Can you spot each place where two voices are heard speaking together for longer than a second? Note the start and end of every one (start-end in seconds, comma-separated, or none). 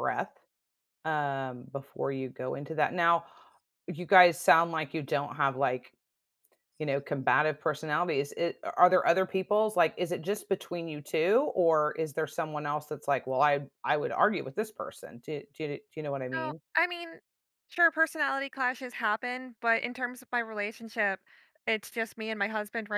none